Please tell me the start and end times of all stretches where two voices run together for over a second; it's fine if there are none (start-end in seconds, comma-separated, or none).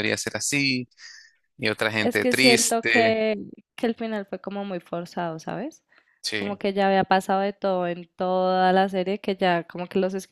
2.0-3.2